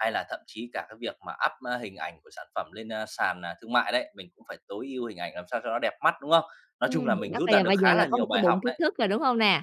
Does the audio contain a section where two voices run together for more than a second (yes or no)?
yes